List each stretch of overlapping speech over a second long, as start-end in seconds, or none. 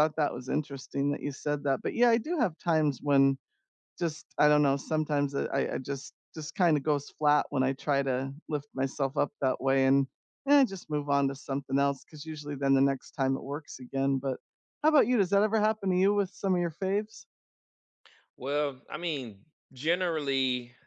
none